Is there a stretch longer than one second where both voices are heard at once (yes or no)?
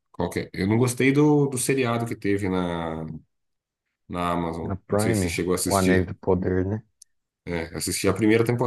yes